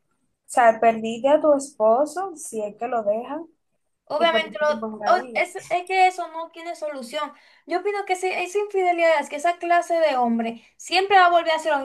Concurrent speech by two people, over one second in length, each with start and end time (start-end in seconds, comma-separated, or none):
4.2-5.4